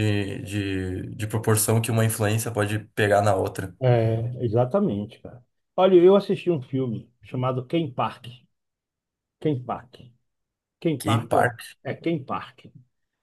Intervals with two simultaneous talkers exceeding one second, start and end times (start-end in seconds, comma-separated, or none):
none